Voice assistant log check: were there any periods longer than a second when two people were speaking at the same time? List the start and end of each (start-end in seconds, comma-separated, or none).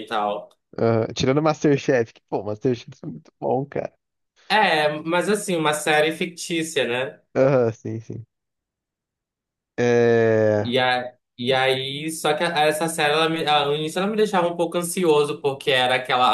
none